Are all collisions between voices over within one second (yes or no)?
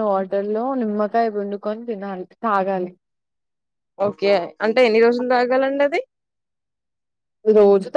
yes